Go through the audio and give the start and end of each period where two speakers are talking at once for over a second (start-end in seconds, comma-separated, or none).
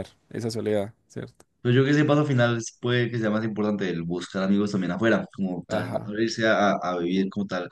none